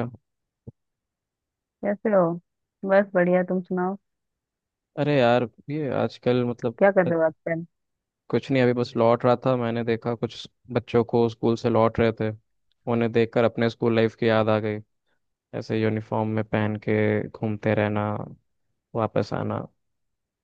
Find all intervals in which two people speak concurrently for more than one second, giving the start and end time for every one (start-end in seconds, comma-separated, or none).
none